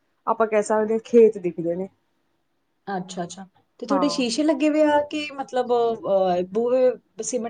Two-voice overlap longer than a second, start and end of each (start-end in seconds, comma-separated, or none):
none